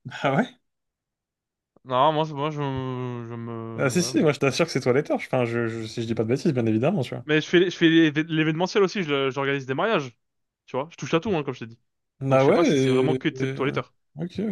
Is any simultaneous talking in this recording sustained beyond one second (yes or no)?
yes